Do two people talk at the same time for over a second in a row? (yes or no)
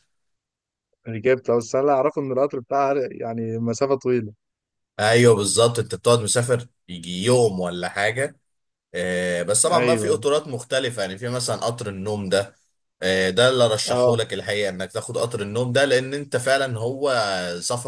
no